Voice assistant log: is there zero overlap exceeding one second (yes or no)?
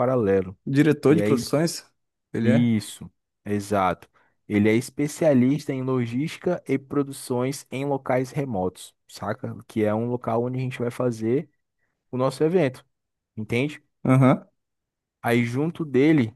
yes